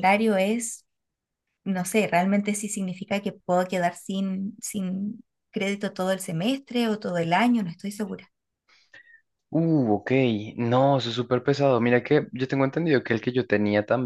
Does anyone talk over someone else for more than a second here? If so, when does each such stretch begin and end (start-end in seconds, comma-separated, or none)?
none